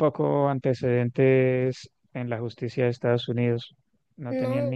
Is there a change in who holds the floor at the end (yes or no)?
no